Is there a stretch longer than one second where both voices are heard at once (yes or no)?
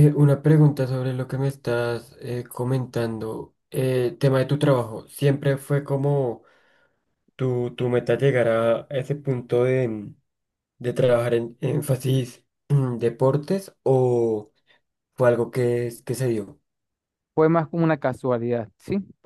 no